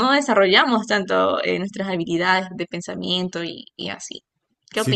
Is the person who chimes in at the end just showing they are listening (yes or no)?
no